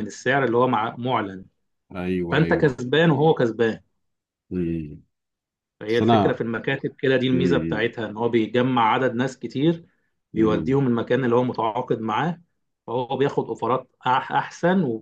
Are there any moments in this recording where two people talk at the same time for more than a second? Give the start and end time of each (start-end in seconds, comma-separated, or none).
none